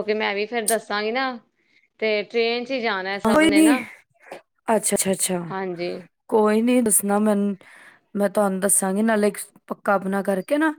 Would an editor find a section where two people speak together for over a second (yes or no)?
no